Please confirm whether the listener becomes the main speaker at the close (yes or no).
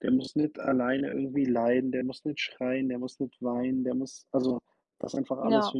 no